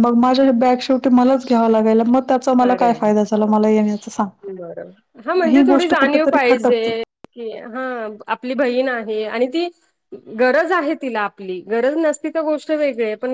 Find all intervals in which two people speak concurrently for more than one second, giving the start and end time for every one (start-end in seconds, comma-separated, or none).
5.4-6.9